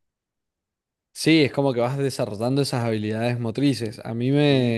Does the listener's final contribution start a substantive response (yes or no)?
no